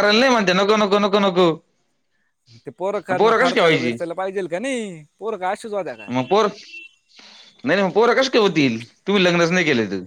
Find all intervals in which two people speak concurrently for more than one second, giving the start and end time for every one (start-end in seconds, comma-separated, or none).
none